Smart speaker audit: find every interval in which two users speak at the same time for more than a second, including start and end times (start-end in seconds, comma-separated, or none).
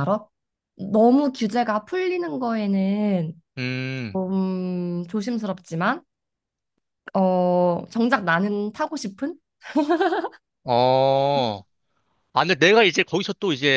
none